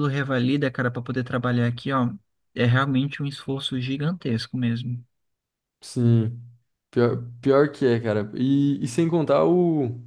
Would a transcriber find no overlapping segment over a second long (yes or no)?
yes